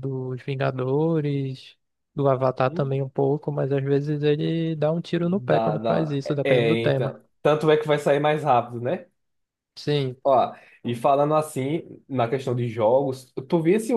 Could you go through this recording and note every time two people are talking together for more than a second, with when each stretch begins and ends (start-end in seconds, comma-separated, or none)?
5.2-7.1